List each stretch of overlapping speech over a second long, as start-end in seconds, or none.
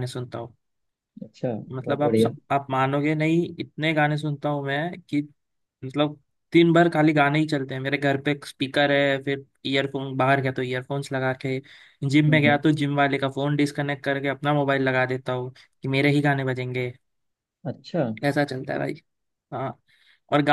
none